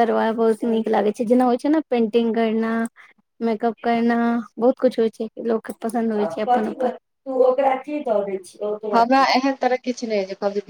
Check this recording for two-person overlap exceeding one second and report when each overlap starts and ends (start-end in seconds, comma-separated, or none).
none